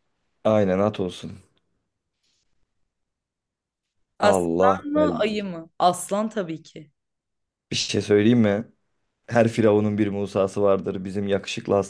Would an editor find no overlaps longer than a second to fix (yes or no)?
no